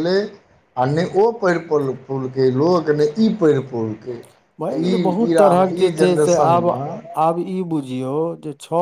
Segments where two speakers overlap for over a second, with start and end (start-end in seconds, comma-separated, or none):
4.6-6.7